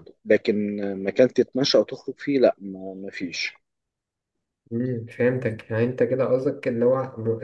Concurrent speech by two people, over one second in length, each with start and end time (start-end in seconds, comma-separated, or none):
none